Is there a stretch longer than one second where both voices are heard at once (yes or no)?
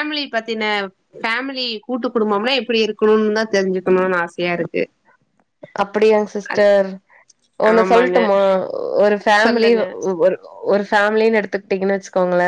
no